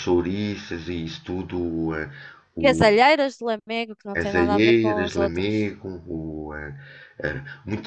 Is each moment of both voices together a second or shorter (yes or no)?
no